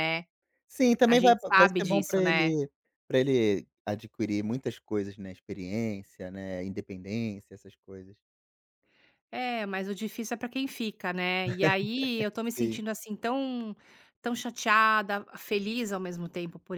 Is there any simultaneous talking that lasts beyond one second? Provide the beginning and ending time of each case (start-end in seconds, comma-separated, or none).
1.1-2.5